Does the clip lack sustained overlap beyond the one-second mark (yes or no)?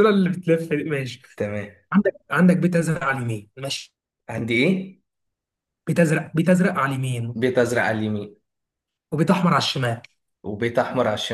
yes